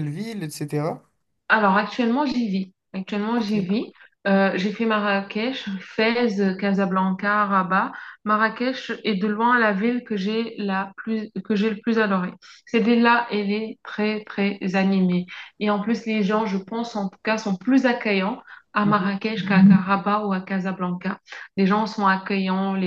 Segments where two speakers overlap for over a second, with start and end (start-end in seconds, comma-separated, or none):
none